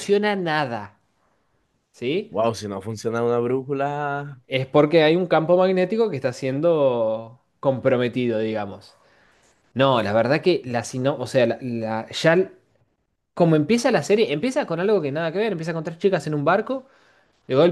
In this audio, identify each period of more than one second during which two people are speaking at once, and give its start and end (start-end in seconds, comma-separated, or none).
none